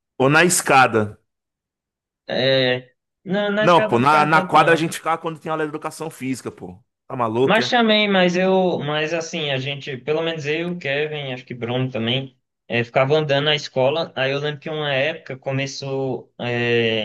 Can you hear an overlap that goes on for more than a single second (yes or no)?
yes